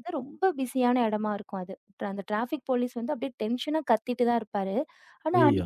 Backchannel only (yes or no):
yes